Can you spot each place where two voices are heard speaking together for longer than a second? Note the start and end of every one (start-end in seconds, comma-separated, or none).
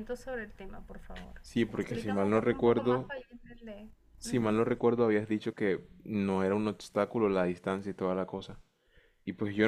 1.4-3.1